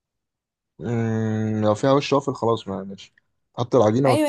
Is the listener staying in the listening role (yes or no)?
no